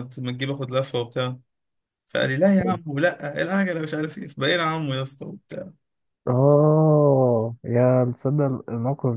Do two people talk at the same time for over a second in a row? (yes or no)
no